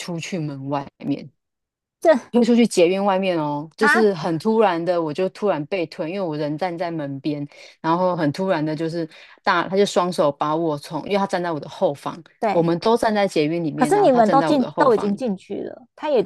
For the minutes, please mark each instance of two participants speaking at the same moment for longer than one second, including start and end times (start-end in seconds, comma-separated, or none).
13.7-15.1